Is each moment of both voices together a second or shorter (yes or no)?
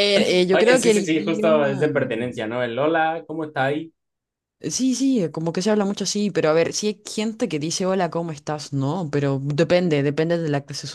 no